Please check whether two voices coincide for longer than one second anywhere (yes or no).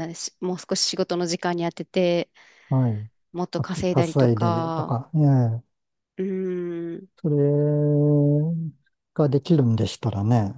yes